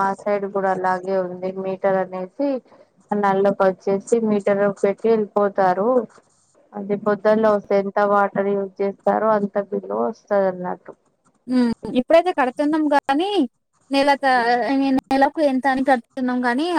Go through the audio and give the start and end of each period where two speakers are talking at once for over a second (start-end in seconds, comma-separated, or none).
none